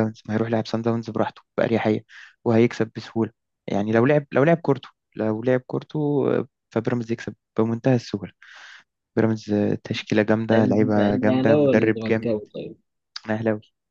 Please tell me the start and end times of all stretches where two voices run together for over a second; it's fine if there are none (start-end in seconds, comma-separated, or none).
10.5-12.3